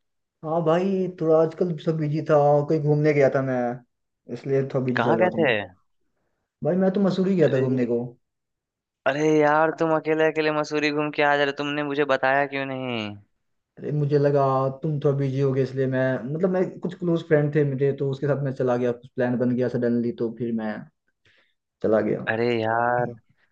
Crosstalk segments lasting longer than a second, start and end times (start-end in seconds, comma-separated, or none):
none